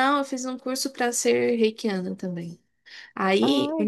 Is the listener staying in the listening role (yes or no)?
yes